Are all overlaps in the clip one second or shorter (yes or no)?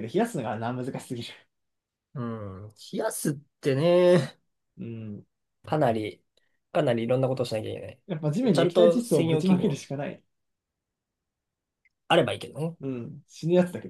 no